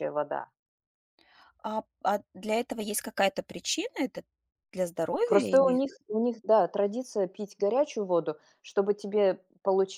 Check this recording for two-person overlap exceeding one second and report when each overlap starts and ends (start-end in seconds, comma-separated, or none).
none